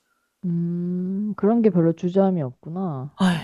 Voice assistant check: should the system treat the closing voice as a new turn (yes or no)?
yes